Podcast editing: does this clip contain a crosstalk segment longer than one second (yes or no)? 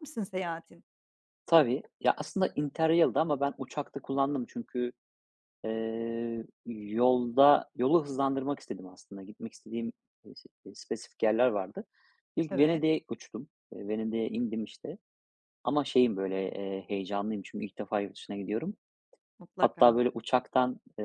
no